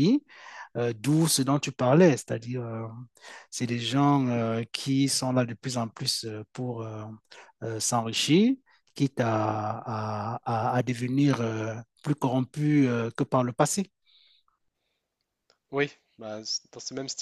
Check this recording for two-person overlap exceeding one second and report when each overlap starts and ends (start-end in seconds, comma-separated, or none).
none